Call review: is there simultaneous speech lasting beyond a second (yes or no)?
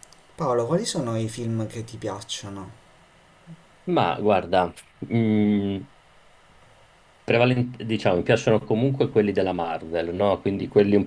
no